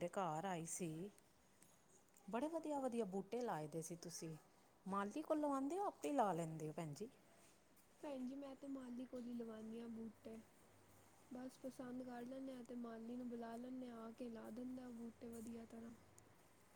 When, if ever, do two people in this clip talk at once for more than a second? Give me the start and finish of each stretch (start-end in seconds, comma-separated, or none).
none